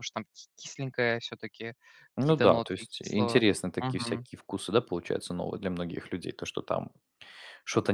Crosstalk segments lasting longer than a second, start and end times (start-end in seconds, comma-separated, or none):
2.2-4.3